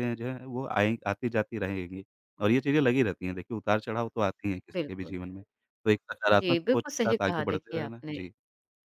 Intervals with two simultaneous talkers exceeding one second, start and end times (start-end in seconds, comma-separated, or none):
6.3-8.1